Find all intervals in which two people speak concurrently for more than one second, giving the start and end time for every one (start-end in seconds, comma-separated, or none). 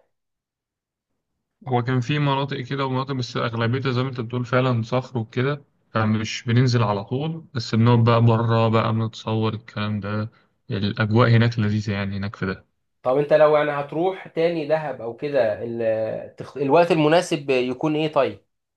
none